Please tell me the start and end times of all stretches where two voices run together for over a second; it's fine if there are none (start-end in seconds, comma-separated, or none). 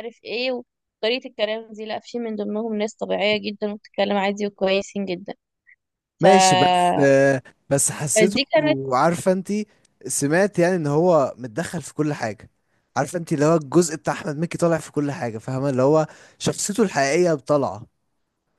none